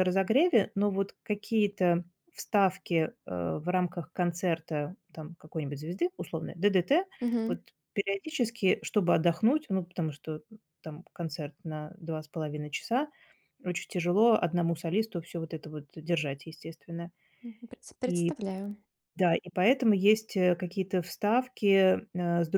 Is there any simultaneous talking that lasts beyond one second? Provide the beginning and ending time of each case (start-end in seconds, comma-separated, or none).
none